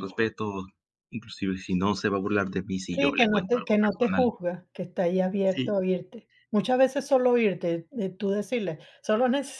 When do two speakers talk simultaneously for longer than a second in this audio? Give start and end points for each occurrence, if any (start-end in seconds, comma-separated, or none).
3.0-4.3